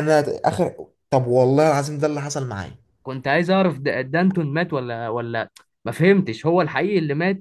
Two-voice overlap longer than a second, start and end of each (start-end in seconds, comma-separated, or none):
none